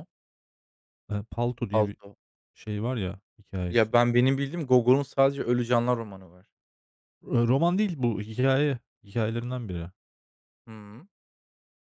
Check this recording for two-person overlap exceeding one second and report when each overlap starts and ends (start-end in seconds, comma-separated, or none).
none